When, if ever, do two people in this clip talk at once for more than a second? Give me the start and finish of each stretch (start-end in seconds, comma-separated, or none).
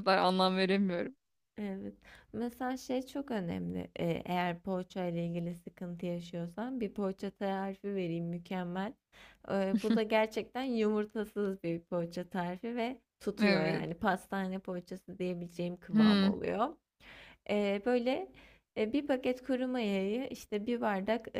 none